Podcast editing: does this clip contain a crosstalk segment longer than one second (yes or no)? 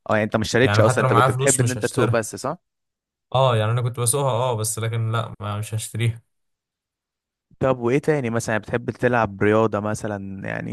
yes